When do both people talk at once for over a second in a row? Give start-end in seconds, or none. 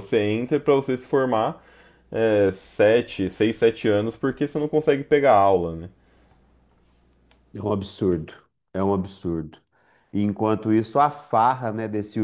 none